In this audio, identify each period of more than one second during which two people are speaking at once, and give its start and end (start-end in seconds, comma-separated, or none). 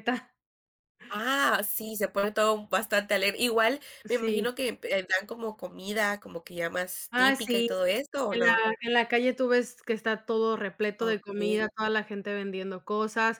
none